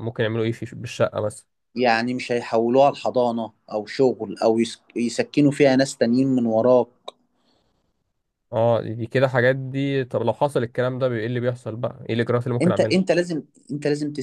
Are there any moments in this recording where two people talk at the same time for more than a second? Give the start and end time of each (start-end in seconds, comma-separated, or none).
none